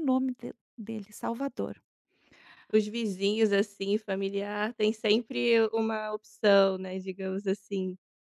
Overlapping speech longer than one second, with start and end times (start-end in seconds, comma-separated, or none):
none